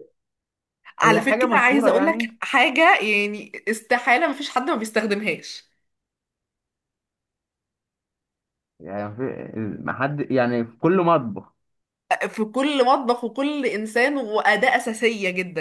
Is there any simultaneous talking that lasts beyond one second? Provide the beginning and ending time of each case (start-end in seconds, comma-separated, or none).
1.0-2.3